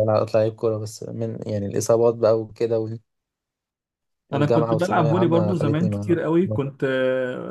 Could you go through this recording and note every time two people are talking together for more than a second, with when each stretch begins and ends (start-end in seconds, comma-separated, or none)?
4.3-6.6